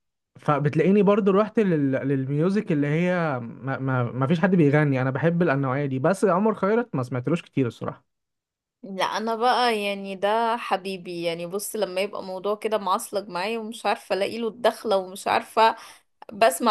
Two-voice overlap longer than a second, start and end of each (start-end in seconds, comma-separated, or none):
none